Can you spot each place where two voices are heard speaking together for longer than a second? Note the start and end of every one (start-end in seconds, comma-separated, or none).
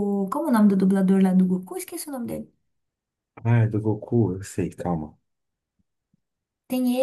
none